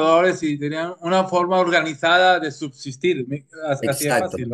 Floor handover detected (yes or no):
yes